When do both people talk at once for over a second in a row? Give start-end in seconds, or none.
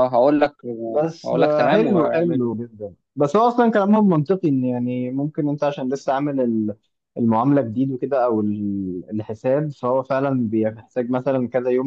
1.2-2.5